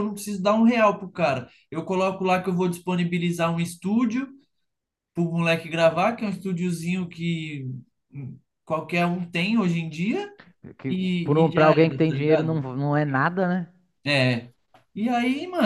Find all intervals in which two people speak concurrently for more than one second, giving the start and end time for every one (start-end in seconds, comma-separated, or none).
10.9-12.6